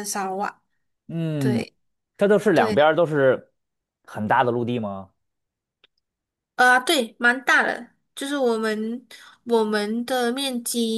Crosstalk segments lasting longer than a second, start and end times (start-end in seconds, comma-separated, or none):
none